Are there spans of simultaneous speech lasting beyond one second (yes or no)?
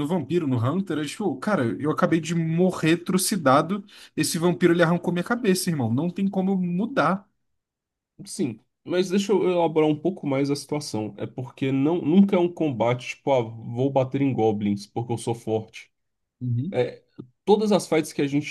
no